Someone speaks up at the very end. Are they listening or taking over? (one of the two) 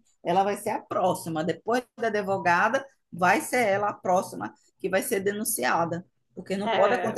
listening